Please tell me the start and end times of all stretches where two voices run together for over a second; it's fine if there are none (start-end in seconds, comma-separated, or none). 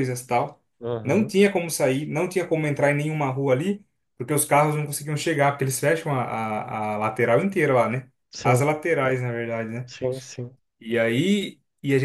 none